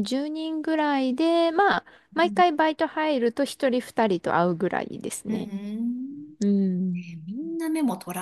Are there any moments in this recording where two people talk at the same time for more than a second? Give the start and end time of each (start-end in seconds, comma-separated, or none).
none